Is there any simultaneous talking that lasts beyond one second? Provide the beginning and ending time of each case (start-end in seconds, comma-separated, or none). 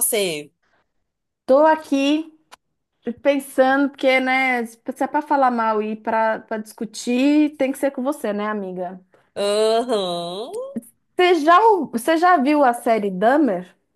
none